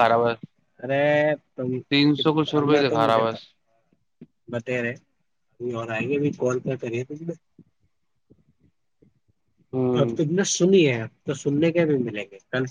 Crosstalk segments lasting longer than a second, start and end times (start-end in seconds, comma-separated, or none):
1.9-3.2